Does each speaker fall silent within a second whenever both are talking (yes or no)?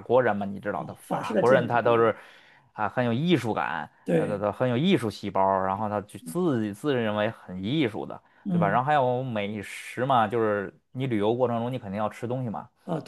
no